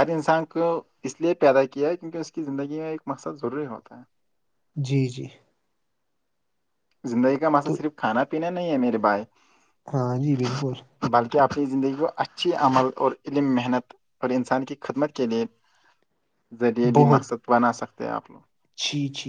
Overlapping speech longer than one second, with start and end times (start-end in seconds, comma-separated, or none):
none